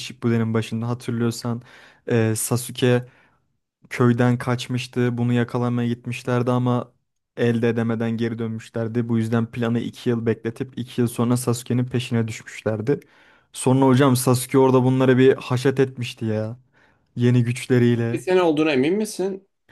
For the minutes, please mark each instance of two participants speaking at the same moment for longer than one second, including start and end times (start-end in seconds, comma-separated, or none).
none